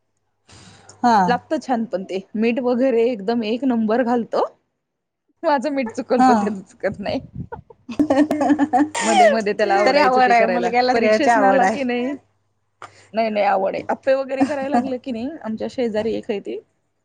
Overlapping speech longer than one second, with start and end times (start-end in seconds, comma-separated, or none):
9.9-11.8